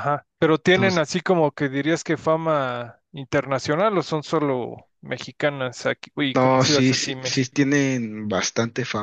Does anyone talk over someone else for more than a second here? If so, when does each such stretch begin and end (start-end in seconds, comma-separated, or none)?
6.3-7.7